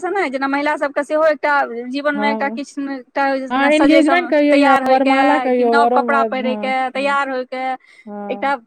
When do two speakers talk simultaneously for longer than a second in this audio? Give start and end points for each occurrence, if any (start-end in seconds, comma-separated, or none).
3.5-7.2